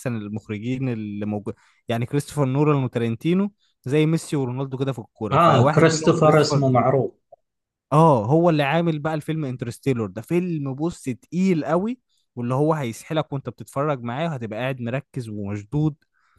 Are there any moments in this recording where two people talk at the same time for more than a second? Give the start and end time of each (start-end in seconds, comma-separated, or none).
5.3-6.6